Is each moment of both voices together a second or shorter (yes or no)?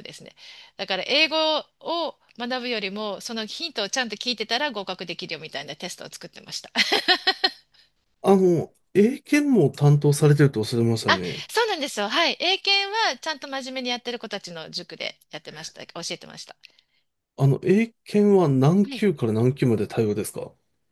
yes